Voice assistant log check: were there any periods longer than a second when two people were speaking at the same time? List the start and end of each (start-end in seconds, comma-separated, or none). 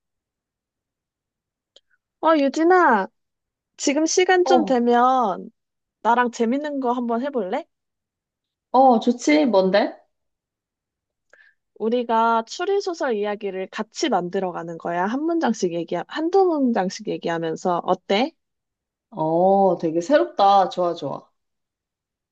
none